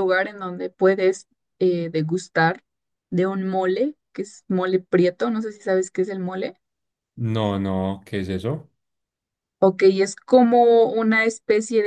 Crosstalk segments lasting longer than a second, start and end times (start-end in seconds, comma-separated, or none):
none